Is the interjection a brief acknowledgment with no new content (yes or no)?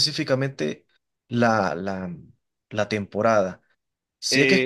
yes